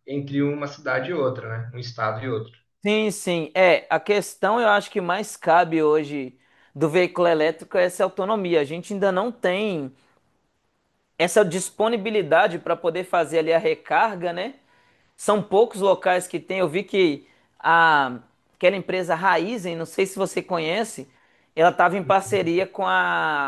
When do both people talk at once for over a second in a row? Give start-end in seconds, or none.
none